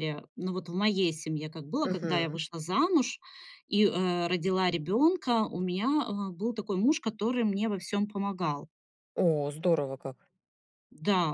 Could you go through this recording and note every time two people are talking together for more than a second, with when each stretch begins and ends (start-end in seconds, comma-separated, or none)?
none